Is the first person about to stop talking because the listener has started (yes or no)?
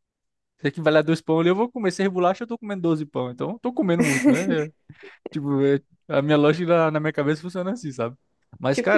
no